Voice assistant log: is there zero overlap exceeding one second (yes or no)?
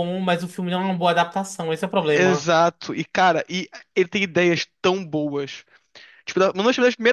yes